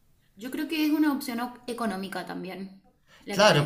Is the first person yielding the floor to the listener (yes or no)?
yes